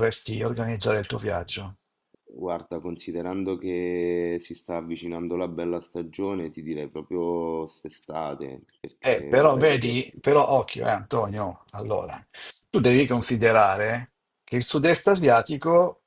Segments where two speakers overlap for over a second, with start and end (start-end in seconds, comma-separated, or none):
9.0-10.2